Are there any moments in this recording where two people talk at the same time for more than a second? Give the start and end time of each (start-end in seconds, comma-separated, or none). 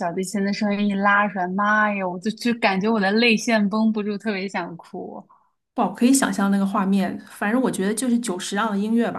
none